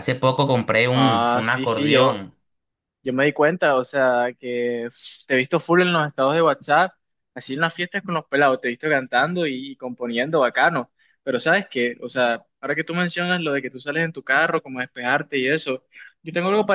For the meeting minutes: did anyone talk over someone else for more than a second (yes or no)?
yes